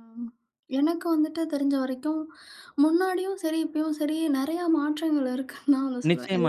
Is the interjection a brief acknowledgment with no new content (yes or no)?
no